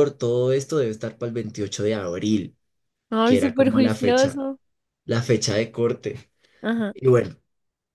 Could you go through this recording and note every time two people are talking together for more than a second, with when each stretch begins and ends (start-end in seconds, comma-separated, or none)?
3.2-4.4